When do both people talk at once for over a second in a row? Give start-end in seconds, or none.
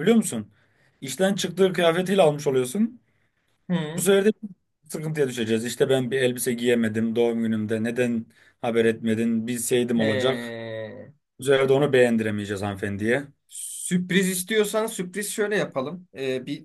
none